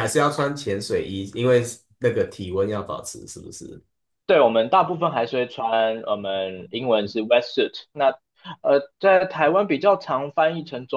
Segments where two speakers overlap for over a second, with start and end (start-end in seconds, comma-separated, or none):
none